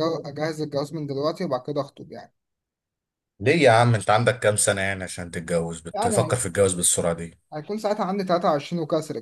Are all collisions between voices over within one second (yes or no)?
yes